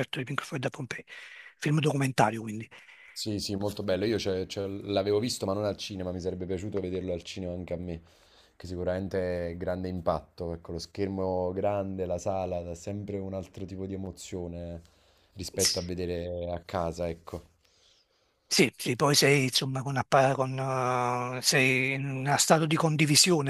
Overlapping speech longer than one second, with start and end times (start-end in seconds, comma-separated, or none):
none